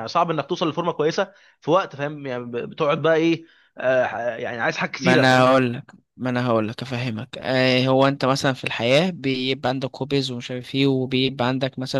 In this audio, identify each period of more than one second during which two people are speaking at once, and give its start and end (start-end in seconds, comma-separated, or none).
none